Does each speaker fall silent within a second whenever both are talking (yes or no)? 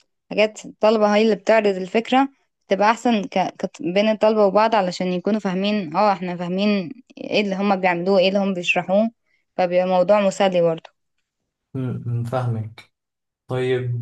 yes